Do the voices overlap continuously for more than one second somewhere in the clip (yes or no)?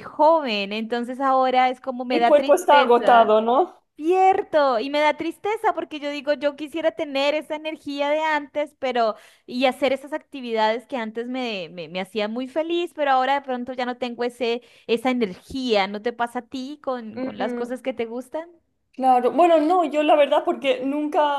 yes